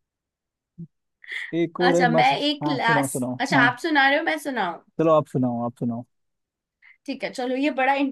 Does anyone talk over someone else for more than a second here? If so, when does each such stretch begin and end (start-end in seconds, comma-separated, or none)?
1.8-3.7